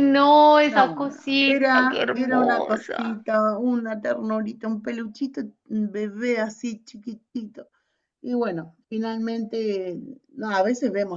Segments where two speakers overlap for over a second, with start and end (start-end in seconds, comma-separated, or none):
0.7-3.2